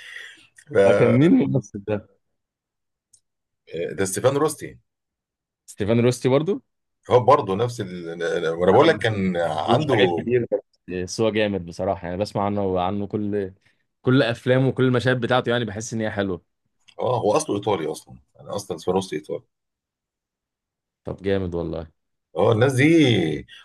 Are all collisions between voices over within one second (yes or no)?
no